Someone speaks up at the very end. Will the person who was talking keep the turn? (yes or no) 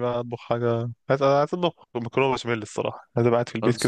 yes